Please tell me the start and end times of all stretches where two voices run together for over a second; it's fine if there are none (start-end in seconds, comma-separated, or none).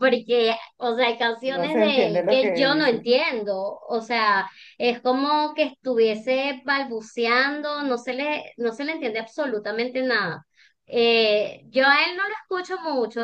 1.4-3.1